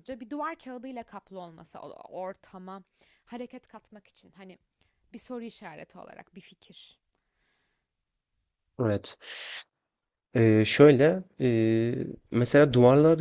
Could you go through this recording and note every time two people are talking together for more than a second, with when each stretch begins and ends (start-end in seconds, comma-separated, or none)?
none